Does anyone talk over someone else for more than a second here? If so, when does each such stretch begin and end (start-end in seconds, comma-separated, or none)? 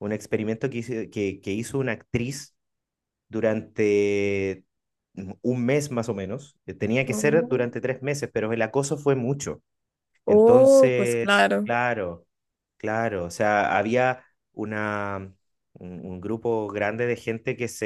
10.2-11.7